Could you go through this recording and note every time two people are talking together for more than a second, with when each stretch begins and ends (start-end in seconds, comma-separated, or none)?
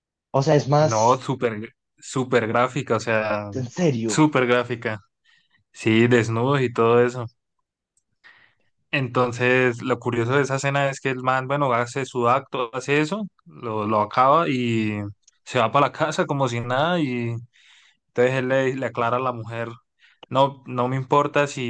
none